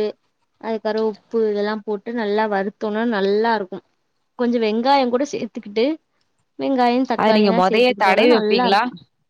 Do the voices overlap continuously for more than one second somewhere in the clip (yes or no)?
yes